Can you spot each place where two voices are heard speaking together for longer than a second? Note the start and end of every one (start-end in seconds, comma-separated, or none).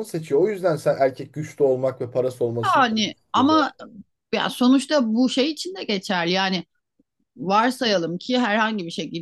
none